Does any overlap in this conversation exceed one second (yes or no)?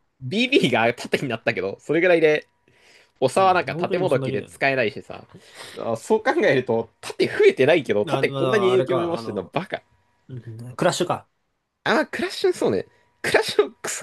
yes